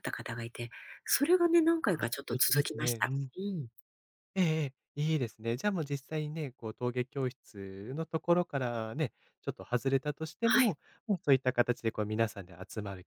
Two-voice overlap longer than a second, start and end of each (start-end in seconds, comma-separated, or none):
1.8-3.3